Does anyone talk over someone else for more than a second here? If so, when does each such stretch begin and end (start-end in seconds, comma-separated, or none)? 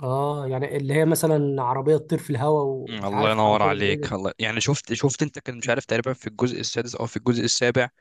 2.9-4.1